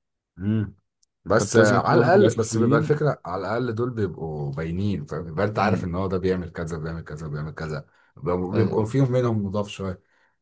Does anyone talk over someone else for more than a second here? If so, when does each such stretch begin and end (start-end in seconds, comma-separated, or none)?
1.4-3.0